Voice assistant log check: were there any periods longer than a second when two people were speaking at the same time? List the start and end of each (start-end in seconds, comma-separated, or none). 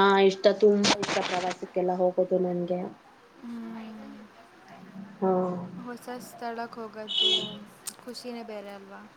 none